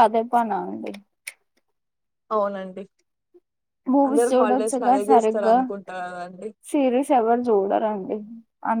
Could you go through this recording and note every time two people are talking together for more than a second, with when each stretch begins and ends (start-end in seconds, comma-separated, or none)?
4.1-5.6